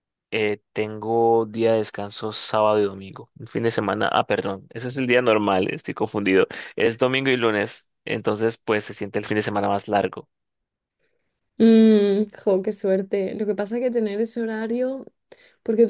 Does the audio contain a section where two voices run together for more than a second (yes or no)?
no